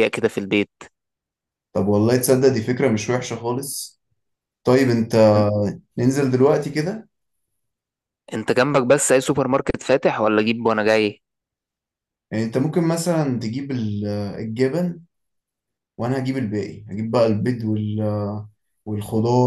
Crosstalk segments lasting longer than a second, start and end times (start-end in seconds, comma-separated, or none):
none